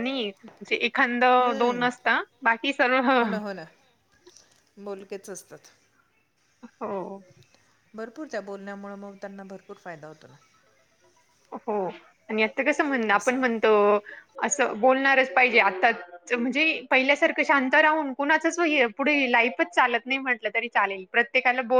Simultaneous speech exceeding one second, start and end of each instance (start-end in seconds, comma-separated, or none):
none